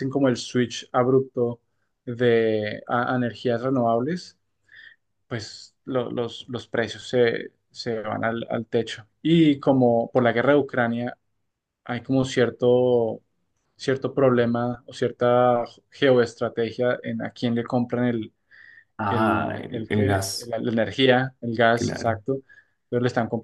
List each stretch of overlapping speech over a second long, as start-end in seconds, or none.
19.1-20.5